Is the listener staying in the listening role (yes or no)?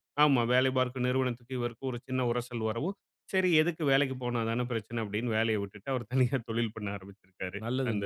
no